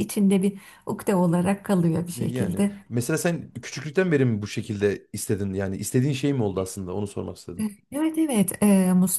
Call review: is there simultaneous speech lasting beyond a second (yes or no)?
no